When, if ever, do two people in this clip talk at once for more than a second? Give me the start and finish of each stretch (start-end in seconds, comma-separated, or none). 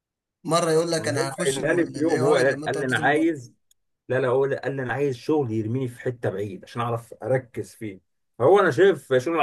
1.0-3.4